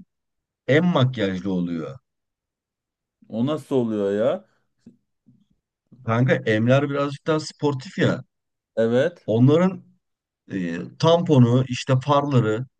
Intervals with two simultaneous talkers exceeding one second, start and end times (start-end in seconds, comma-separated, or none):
none